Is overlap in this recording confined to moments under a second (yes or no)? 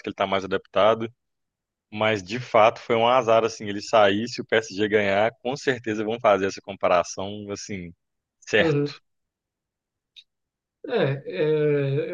yes